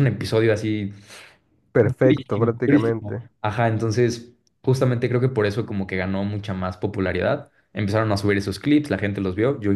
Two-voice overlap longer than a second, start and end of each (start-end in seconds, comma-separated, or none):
1.8-3.3